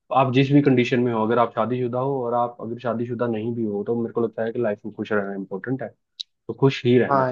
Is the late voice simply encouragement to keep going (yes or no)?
no